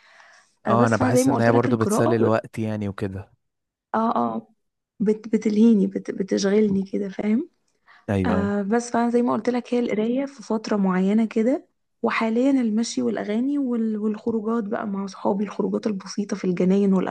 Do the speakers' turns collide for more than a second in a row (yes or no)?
yes